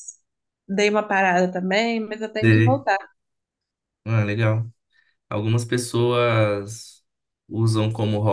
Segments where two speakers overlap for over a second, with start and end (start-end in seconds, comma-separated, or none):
none